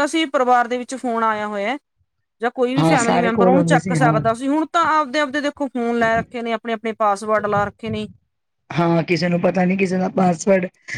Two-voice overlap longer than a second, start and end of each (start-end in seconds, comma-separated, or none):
2.8-4.2